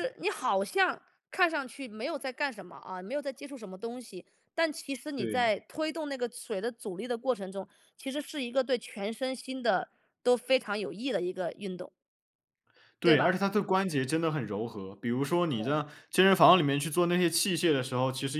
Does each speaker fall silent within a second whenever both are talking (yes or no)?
yes